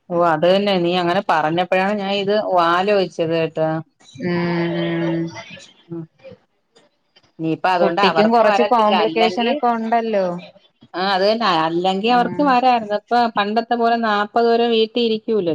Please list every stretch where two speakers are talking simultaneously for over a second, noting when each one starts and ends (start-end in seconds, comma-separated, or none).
7.8-9.5